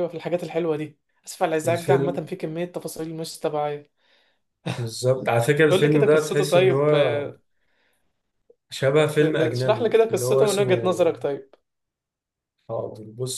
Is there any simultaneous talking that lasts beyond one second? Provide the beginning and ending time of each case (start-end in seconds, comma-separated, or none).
5.7-7.3, 9.2-10.7